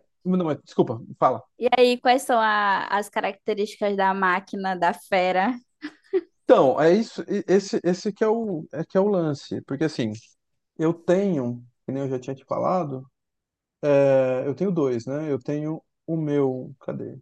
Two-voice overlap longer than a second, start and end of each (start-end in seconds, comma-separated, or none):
none